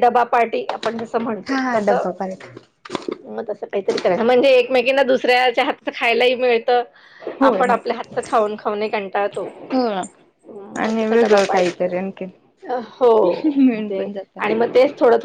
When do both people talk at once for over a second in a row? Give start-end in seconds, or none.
10.8-12.3